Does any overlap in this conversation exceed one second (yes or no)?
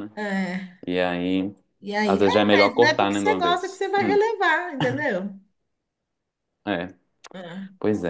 yes